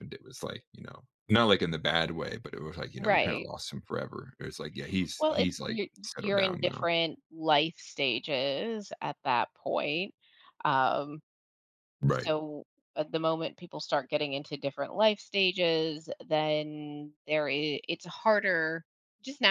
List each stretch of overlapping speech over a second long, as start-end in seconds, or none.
5.2-6.9